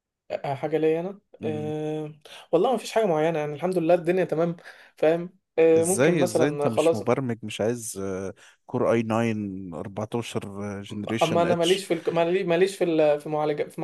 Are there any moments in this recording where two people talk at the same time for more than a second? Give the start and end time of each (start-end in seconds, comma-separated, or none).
5.8-7.0